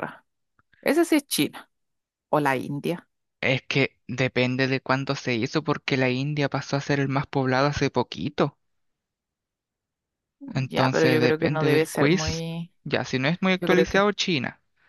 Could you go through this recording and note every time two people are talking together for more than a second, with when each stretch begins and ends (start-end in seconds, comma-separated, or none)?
10.7-12.4